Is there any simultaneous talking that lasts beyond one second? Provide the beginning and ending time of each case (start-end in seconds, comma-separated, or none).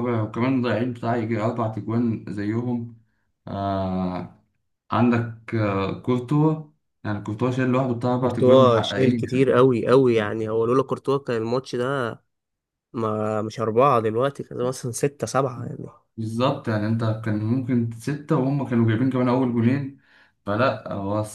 8.2-9.4